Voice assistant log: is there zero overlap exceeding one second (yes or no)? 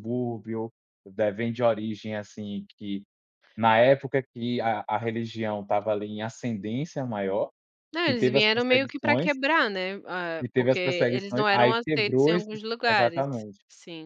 no